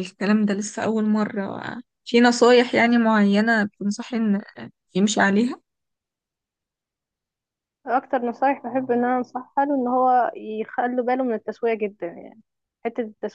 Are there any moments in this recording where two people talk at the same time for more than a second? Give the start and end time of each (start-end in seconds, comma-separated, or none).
none